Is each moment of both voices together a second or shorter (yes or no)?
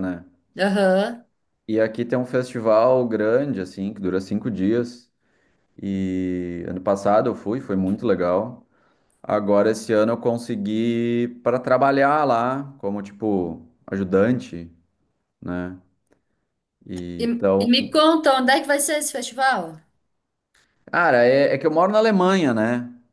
yes